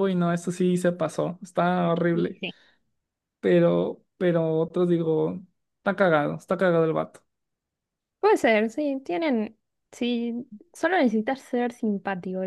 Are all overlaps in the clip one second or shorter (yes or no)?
yes